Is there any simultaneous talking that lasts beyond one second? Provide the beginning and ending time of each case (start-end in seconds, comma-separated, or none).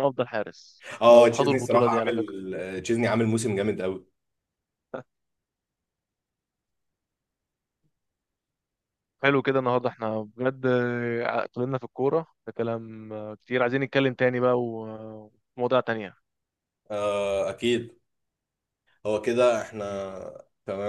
1.0-2.3